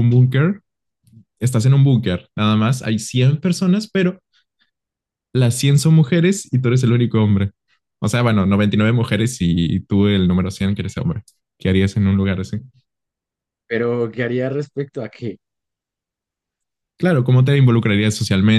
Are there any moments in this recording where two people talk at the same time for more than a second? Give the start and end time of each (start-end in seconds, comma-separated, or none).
none